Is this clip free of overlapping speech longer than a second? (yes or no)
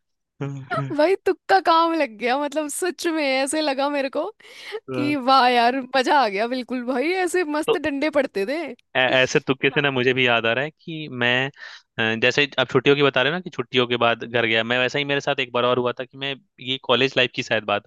yes